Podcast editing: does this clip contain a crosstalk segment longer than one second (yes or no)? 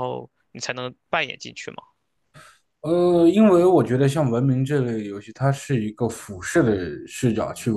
no